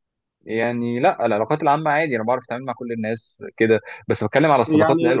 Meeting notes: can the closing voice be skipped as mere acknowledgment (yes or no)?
yes